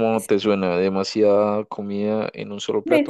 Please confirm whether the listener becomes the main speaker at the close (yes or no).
yes